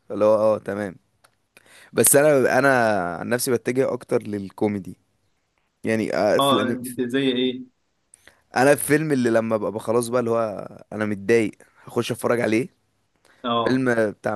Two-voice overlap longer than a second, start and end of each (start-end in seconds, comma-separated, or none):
none